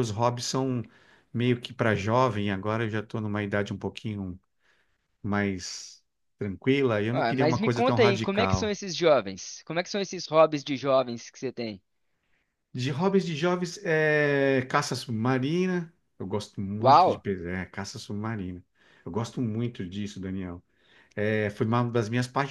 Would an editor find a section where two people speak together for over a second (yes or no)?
yes